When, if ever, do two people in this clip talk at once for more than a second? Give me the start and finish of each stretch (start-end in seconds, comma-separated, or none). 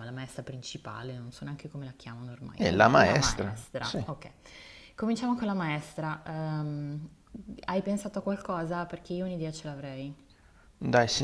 2.5-4.0